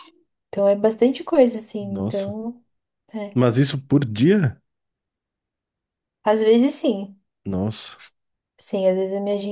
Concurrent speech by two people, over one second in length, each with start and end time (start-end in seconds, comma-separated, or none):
none